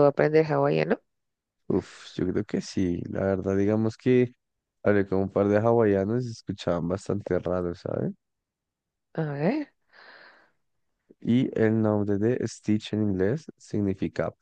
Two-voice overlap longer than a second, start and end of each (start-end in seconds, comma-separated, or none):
none